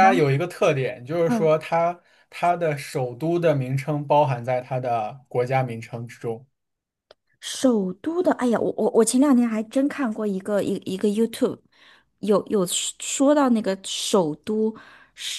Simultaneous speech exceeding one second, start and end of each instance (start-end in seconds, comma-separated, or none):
none